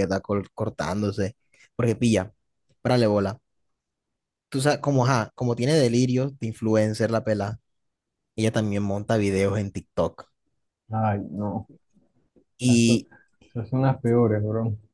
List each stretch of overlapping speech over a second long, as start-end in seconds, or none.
none